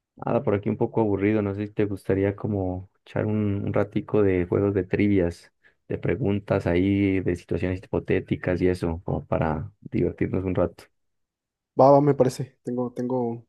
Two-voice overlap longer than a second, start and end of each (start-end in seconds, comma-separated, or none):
none